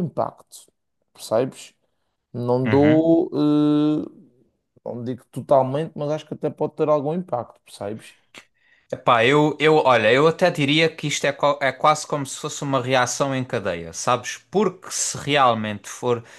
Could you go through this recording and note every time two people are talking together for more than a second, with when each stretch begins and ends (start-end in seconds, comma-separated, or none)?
none